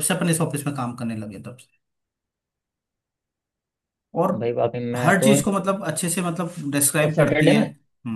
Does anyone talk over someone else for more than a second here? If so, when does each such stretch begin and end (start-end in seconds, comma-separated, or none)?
none